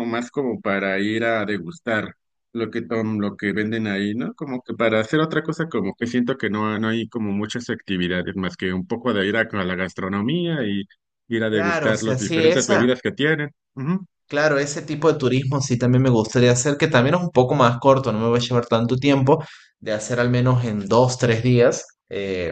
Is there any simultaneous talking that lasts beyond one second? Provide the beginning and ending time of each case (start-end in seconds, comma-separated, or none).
11.5-12.9